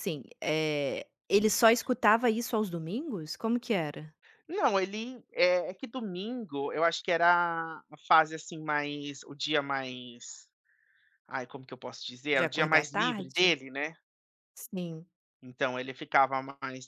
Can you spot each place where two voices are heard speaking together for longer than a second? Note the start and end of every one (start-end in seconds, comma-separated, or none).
12.3-13.6